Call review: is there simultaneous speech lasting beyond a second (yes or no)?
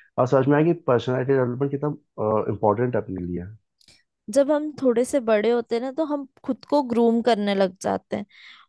no